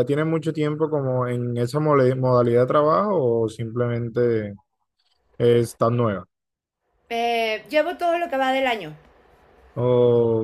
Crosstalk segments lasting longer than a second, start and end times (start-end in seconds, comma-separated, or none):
none